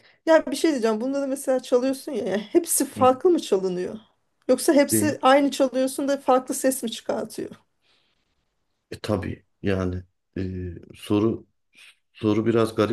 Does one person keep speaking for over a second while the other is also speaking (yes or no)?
no